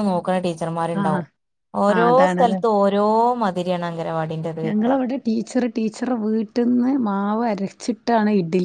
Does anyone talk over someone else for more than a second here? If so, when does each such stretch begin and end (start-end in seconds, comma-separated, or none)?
none